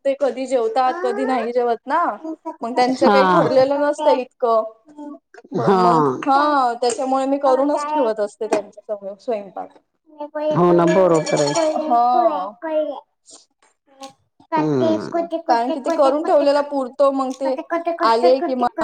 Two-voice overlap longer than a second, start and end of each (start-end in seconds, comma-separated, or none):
none